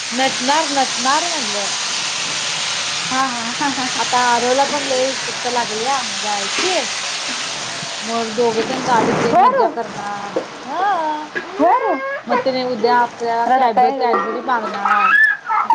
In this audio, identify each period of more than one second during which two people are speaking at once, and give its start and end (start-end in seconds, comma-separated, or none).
none